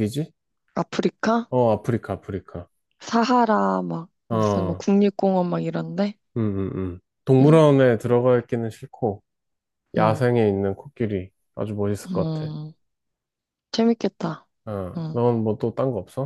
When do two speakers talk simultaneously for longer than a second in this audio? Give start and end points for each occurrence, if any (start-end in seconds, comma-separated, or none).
none